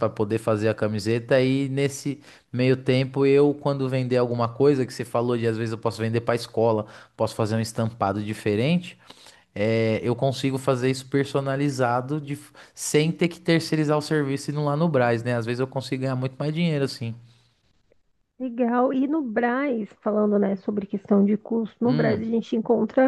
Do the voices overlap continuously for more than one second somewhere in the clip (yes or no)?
no